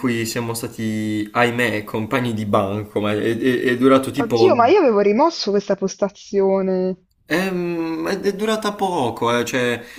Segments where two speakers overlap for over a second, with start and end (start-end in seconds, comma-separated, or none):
none